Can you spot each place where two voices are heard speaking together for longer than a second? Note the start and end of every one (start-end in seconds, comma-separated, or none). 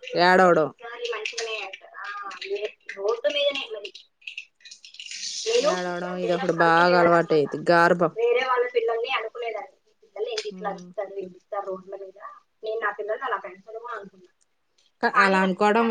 5.7-7.5